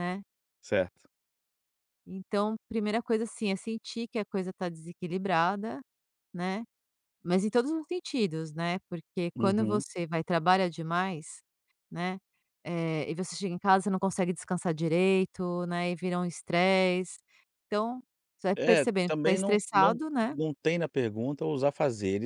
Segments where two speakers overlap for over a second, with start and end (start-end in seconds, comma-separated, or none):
18.6-20.3